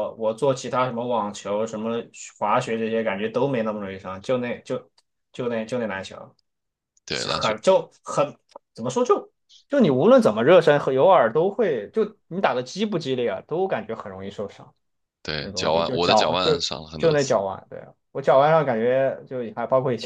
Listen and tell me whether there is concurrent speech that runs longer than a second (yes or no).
yes